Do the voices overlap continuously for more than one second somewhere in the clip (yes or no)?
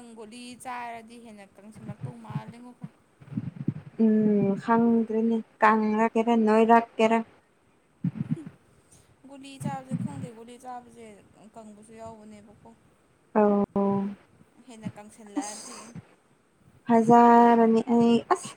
no